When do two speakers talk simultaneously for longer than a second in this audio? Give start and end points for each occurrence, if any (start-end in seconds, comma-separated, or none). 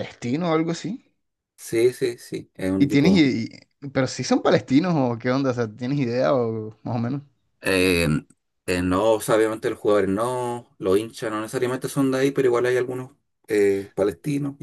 none